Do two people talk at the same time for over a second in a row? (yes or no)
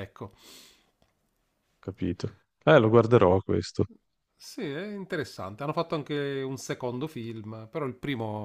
no